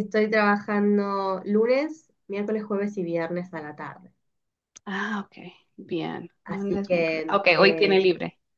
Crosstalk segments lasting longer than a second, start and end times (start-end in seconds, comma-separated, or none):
6.4-8.1